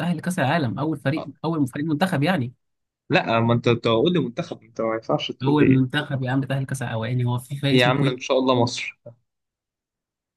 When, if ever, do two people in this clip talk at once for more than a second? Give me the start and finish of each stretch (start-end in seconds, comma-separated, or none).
none